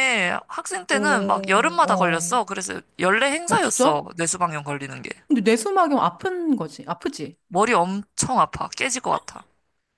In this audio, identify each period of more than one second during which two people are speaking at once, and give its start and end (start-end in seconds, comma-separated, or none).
0.9-2.4